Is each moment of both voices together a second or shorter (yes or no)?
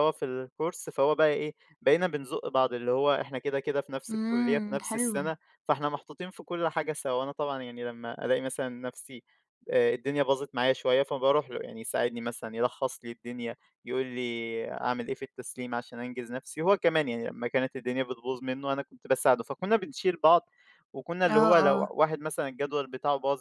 no